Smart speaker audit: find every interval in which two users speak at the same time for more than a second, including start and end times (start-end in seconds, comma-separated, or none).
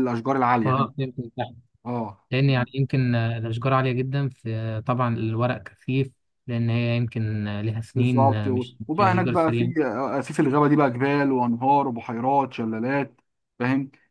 7.9-9.7